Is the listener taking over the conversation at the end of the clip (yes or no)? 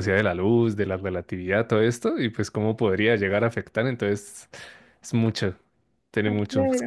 yes